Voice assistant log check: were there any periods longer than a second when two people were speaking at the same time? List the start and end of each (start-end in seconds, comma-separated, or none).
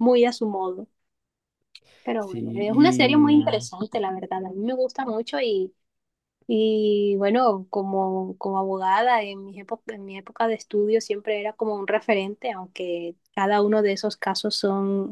2.2-3.7